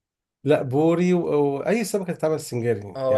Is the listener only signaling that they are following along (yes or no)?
no